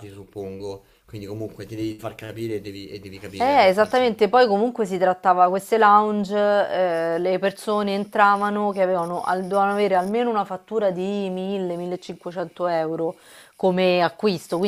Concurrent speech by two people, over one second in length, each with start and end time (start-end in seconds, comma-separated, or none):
3.4-4.6